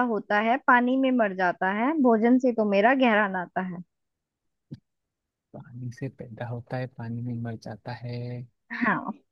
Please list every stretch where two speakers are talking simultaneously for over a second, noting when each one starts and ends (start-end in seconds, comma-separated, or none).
none